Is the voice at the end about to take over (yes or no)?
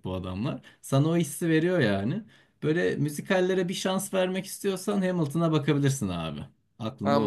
yes